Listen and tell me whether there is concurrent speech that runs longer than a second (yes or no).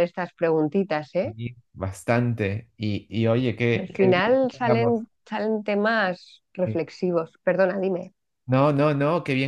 yes